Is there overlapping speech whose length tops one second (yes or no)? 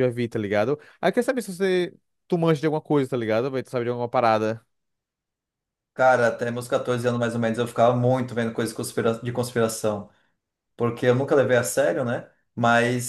no